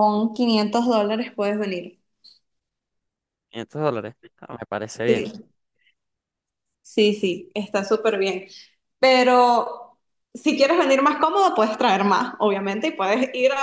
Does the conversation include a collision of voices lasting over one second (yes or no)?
no